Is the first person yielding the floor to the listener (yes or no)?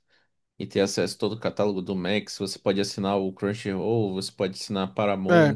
yes